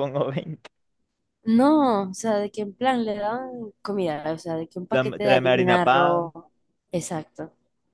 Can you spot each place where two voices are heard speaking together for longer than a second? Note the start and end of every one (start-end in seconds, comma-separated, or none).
4.9-6.3